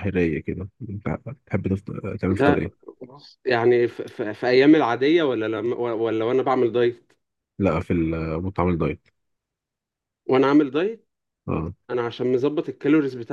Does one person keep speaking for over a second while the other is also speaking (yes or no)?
no